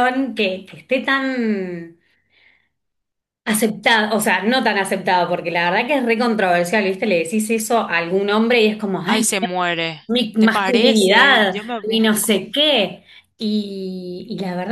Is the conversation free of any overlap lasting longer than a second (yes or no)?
no